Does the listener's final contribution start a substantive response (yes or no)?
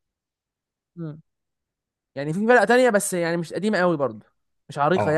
yes